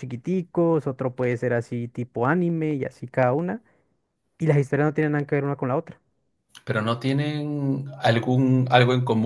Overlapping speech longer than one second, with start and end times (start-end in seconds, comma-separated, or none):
none